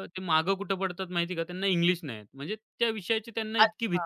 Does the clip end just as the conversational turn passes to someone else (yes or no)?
yes